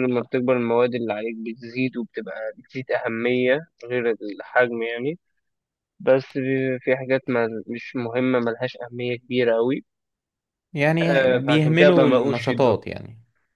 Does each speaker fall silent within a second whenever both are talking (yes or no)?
no